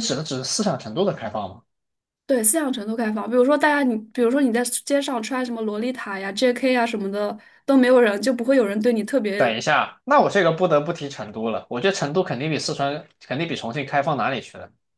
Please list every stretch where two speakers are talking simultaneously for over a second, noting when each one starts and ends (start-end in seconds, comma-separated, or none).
none